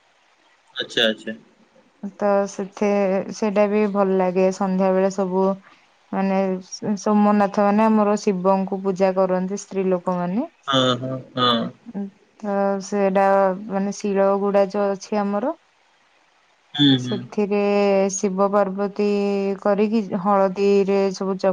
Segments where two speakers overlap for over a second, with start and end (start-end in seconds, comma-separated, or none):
none